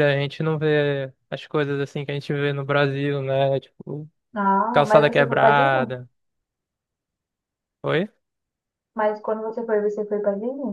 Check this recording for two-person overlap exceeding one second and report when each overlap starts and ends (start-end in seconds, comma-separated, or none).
4.7-5.9